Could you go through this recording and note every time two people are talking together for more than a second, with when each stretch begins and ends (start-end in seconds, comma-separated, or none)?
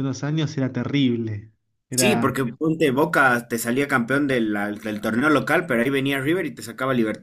none